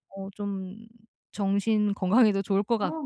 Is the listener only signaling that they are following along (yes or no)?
yes